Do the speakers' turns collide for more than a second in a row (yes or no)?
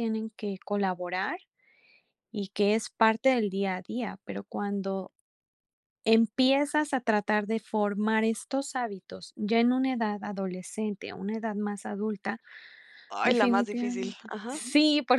yes